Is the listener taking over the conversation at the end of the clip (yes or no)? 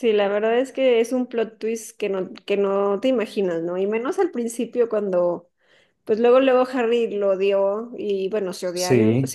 no